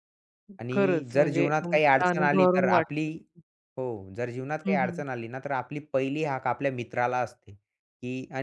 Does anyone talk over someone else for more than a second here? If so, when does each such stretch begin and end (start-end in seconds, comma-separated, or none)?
0.7-3.1